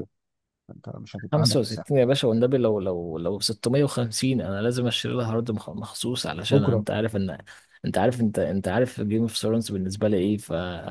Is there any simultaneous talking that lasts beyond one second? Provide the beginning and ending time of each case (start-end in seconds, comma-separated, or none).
none